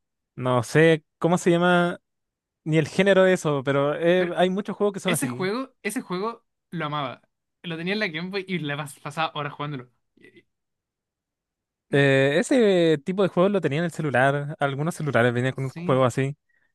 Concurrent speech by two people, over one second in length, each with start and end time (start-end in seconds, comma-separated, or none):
none